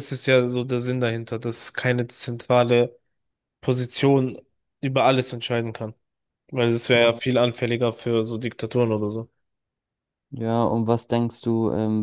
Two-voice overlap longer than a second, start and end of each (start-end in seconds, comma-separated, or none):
none